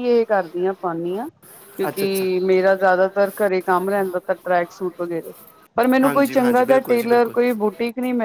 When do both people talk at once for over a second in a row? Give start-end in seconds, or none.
6.0-7.3